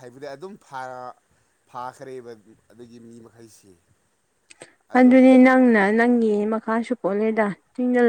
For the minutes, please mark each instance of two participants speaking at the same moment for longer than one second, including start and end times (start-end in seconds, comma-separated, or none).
none